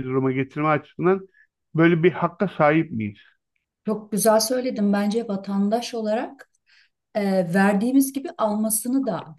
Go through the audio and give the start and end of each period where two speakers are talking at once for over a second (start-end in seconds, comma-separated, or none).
none